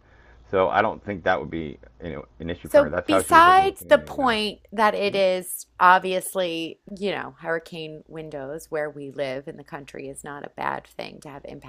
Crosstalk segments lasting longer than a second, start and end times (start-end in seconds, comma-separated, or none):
2.7-4.4